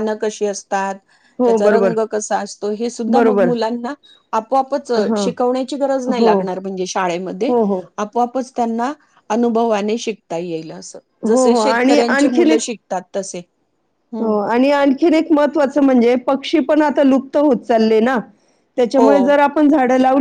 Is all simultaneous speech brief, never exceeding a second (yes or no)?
no